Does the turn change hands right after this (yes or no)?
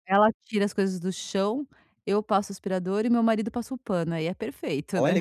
yes